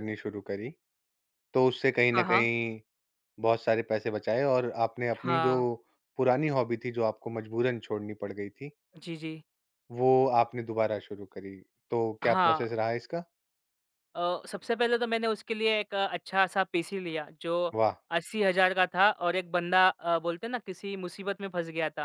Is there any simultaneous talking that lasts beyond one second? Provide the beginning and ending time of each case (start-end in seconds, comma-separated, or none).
none